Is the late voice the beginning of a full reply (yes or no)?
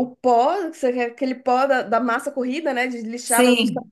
no